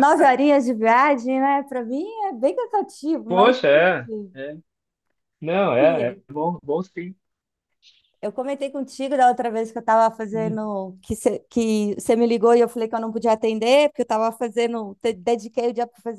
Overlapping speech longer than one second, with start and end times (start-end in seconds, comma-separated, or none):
none